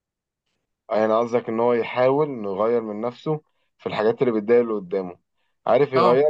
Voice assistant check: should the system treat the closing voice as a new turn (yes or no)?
no